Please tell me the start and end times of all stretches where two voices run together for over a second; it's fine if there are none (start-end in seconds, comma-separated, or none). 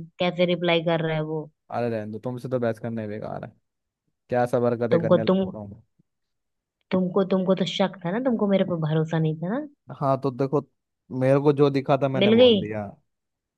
none